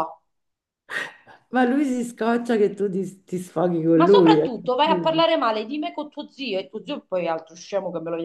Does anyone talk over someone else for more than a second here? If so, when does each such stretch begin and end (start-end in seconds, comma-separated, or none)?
none